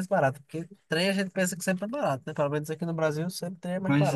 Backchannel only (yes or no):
no